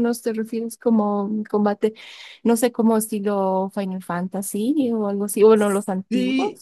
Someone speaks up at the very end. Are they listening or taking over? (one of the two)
taking over